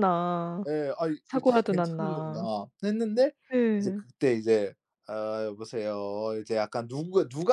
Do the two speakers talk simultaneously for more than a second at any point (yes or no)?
yes